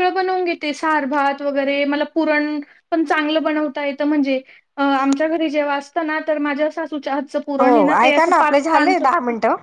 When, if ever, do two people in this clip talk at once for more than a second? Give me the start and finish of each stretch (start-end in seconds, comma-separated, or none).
7.6-9.0